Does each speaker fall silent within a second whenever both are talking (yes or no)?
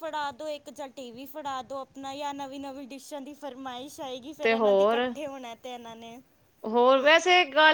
yes